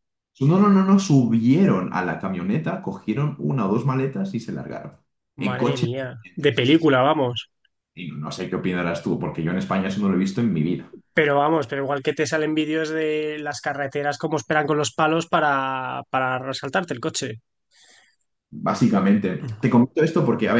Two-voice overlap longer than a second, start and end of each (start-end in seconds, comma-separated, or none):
5.4-6.9